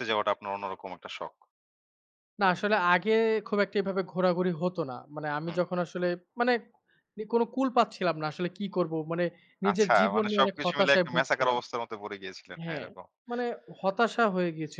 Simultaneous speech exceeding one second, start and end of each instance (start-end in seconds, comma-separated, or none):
9.7-11.6